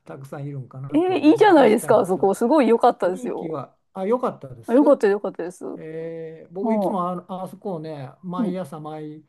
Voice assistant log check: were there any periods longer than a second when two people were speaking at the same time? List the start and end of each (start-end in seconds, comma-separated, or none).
0.9-2.3